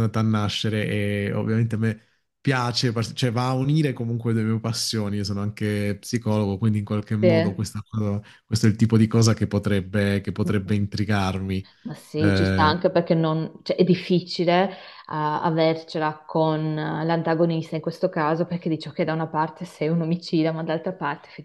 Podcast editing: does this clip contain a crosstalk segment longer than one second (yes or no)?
no